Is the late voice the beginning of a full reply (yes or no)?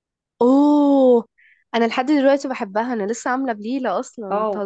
yes